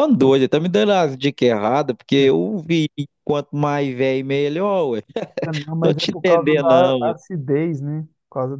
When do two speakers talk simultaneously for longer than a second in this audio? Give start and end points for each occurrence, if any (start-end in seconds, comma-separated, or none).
5.8-7.1